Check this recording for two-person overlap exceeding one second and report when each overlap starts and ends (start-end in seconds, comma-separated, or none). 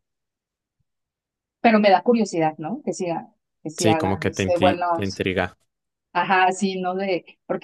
3.8-5.2